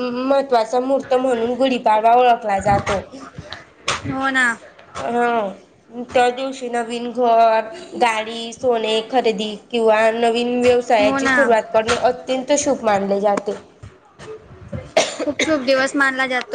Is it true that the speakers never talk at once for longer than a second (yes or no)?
yes